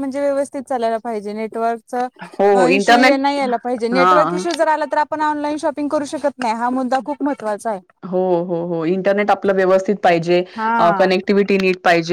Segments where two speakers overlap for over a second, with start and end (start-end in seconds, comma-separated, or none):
none